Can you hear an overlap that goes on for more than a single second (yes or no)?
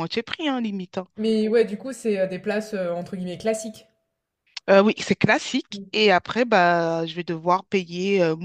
no